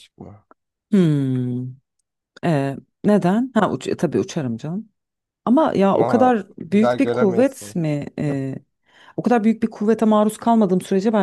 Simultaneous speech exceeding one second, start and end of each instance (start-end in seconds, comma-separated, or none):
5.9-7.7